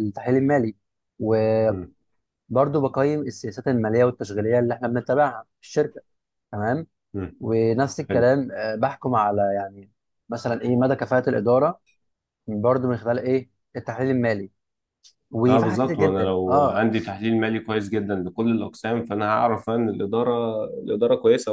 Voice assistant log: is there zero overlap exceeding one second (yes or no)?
no